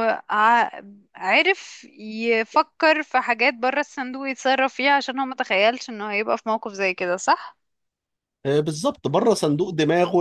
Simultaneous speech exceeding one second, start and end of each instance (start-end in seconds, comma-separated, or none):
none